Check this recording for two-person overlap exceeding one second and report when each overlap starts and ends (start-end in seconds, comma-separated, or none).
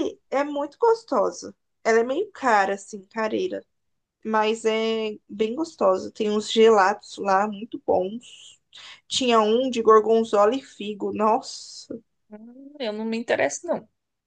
none